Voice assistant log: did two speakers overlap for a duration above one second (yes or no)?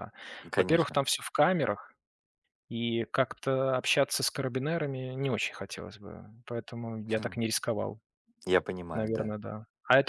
no